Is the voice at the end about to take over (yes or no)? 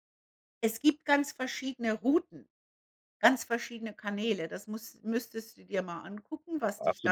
yes